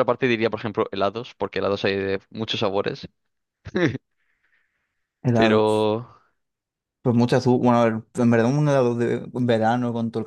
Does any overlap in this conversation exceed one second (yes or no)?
no